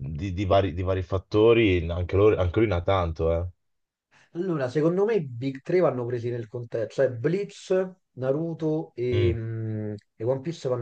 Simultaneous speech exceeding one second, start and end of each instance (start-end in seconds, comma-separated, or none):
none